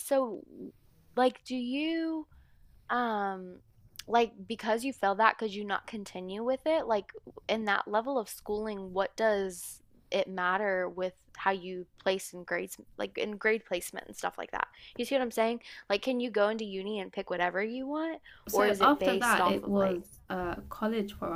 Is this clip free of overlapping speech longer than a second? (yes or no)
no